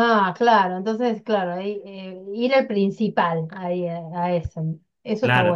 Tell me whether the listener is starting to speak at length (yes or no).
yes